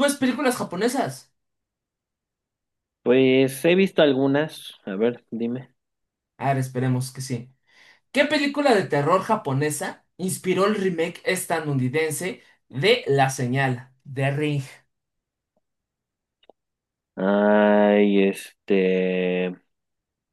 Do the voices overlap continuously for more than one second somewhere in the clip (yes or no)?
no